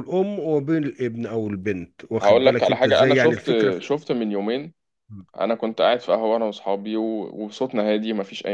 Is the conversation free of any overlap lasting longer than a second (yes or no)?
no